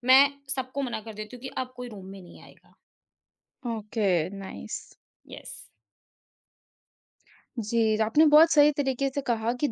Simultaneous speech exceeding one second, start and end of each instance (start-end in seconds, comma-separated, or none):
none